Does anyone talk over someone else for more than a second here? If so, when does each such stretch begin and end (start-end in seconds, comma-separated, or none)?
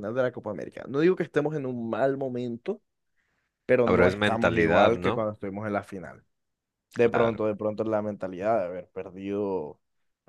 3.9-5.3